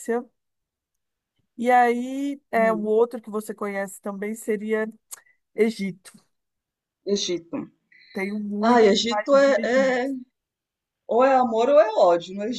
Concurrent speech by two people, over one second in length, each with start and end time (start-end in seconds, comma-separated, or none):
8.6-10.1